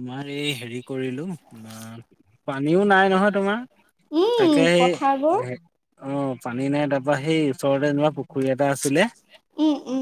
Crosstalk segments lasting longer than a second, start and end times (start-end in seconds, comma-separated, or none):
none